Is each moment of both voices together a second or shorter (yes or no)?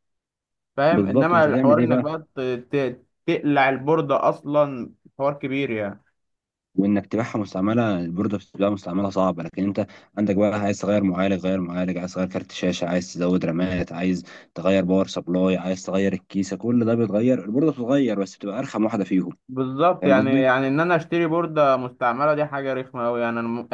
no